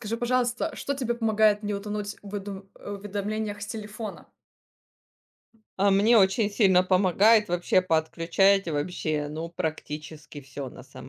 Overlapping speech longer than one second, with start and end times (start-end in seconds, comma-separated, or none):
none